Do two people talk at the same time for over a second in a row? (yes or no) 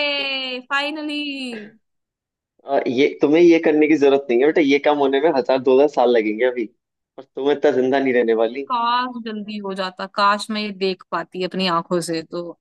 no